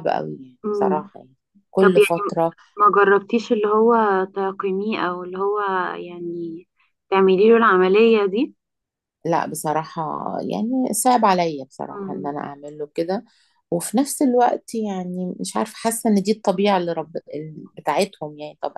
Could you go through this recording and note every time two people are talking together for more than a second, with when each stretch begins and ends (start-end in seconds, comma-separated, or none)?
none